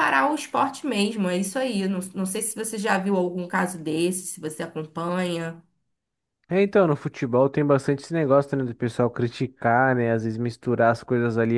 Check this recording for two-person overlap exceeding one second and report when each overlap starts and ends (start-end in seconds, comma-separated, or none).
none